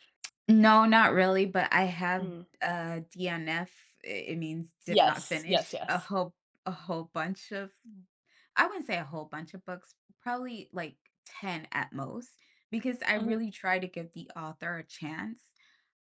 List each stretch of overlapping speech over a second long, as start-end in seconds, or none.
4.9-6.1